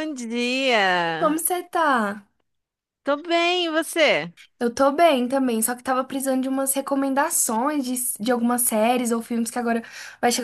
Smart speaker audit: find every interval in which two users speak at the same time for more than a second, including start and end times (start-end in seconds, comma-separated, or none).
none